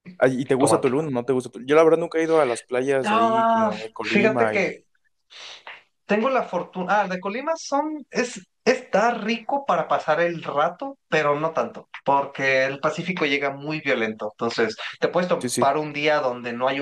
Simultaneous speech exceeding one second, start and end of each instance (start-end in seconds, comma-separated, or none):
3.0-4.8